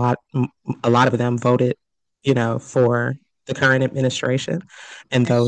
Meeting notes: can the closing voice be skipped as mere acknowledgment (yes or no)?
yes